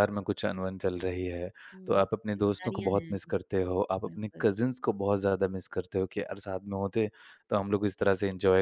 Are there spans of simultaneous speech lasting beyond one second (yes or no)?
yes